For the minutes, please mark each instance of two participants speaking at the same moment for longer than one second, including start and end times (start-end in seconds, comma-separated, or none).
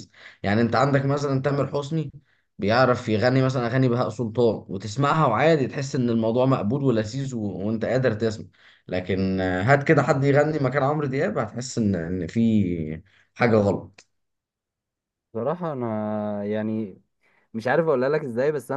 none